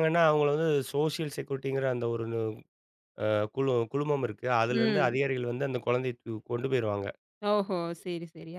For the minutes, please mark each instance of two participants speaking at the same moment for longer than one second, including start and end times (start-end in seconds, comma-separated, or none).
none